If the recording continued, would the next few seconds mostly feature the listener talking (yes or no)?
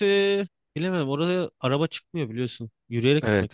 yes